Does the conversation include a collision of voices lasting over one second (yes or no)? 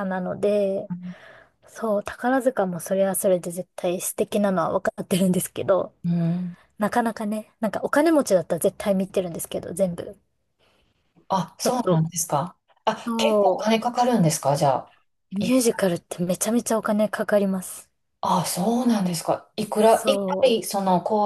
no